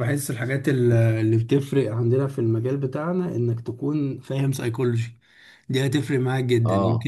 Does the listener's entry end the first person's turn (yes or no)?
no